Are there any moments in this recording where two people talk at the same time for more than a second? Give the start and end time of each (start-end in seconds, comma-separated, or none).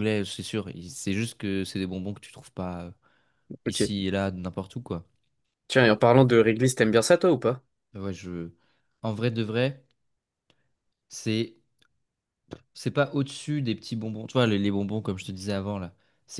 none